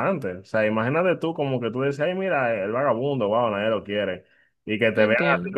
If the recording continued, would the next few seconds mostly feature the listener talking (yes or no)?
no